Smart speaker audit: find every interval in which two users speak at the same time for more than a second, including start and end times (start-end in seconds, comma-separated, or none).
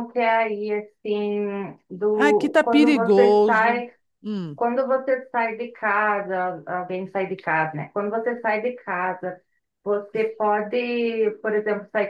2.1-3.8